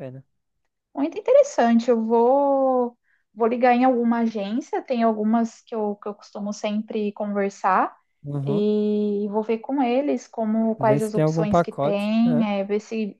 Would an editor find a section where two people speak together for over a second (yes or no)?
yes